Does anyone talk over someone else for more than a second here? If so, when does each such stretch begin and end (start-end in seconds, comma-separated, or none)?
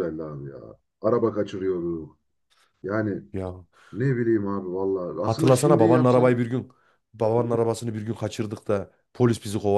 5.2-6.4